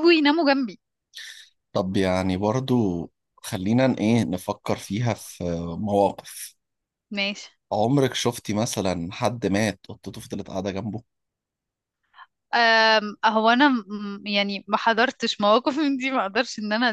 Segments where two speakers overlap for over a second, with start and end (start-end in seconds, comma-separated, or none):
none